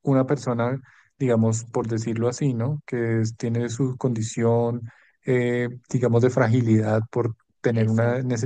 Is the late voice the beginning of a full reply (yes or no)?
no